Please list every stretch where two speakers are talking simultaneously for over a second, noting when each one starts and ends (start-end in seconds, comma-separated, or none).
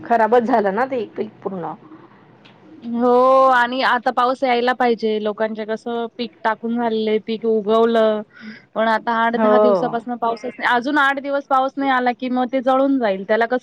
none